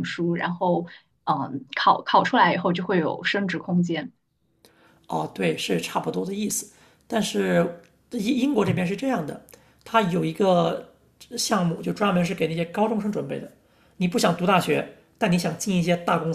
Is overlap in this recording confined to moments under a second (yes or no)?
yes